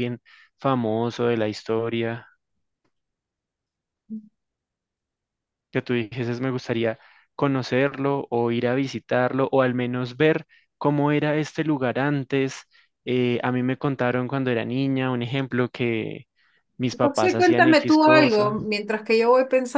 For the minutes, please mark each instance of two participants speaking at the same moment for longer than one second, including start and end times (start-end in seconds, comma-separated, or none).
17.0-18.5